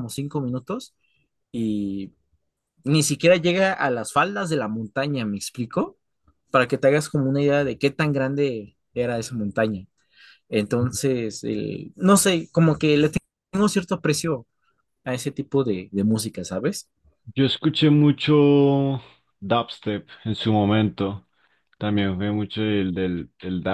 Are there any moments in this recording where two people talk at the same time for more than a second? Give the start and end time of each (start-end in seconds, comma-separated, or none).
none